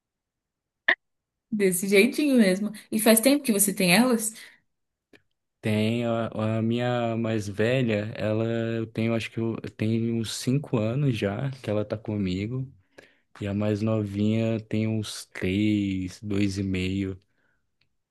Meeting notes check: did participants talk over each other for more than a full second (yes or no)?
no